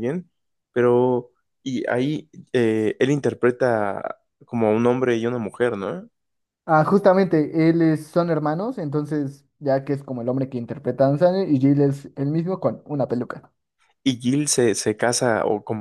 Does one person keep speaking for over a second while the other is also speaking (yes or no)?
no